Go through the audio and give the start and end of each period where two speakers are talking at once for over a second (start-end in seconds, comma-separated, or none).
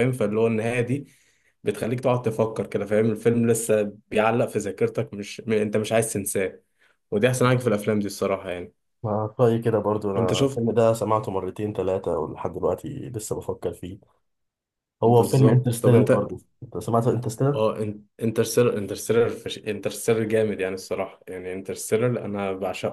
15.0-16.3